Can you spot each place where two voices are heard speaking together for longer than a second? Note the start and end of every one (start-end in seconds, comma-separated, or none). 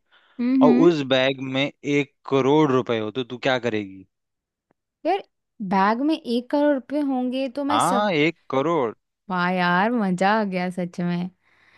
none